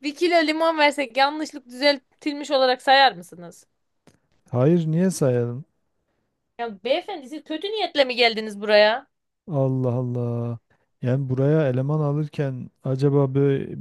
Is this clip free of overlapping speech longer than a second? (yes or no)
yes